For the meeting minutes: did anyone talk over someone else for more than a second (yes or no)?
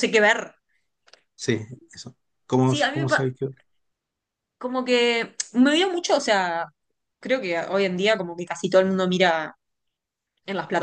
no